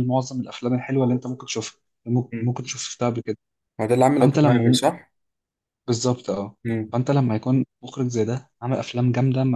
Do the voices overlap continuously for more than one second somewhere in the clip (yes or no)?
no